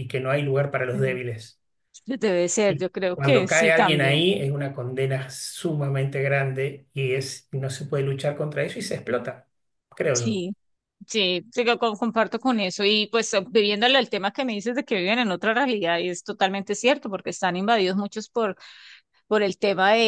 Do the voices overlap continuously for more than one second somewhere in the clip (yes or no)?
yes